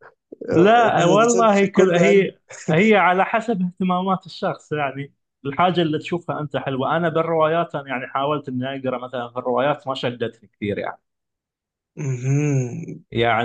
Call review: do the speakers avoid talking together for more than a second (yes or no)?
no